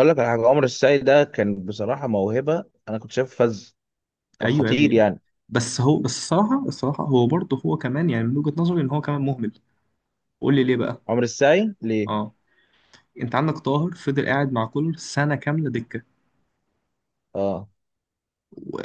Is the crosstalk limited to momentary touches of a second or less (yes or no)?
yes